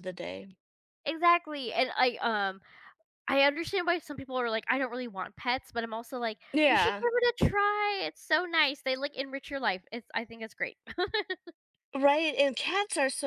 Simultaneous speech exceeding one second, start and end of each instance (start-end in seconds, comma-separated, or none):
none